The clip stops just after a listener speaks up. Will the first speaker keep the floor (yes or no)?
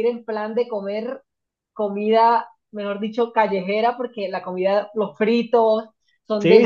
no